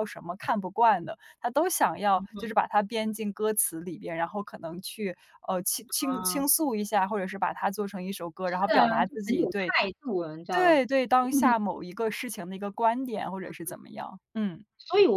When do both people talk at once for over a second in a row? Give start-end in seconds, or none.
8.4-9.8